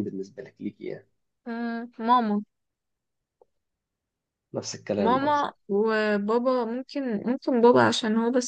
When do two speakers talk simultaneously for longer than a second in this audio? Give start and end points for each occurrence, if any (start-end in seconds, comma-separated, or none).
none